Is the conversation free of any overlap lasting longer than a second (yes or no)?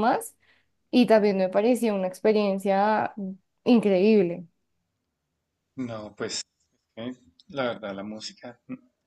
yes